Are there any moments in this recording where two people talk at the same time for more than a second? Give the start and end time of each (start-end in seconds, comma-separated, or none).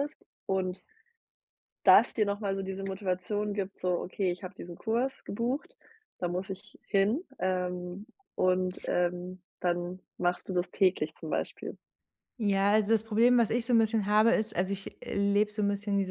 none